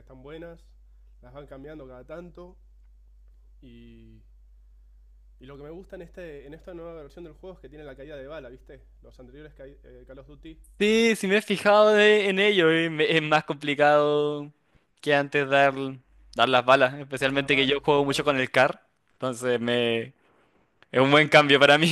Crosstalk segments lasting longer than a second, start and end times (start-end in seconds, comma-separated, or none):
17.1-18.4